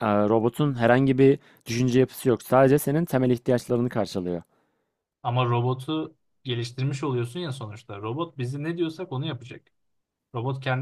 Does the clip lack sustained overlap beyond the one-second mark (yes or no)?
yes